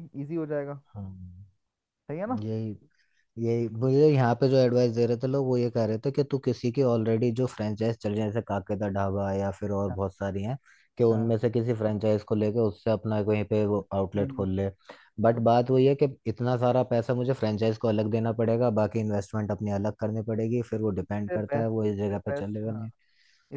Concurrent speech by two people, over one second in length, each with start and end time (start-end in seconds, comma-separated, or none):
21.0-22.9